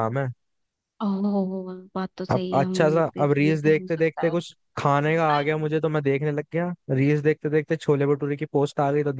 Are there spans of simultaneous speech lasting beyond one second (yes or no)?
yes